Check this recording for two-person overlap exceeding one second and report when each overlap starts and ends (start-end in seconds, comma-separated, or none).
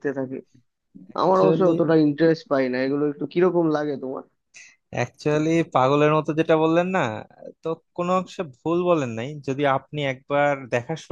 none